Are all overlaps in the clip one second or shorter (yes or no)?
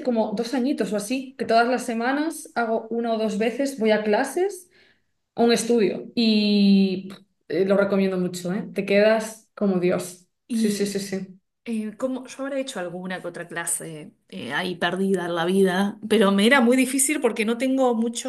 yes